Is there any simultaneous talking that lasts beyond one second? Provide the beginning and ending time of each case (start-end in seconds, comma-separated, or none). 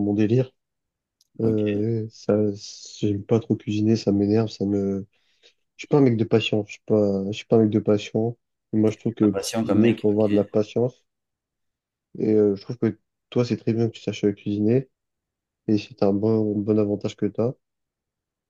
9.2-10.5